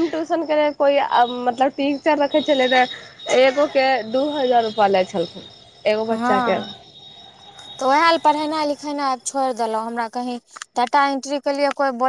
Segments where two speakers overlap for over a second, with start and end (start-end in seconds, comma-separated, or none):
none